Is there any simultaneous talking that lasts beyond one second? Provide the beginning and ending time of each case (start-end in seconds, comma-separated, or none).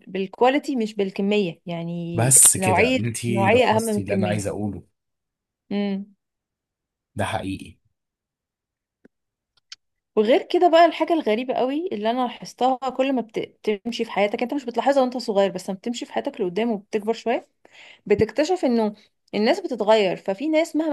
2.1-4.4